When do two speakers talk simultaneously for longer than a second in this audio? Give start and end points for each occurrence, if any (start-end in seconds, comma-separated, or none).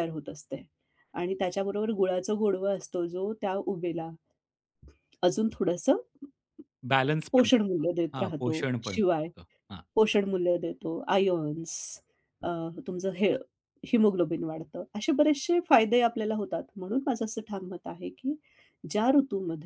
7.3-9.3